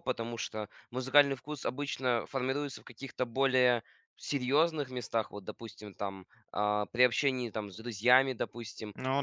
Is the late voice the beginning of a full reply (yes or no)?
no